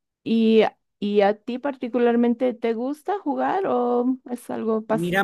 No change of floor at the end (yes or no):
no